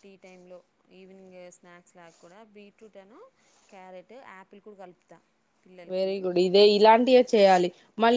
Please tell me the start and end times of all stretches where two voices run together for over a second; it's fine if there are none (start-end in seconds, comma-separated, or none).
none